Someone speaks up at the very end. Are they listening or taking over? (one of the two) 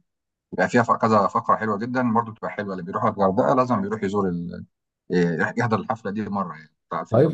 taking over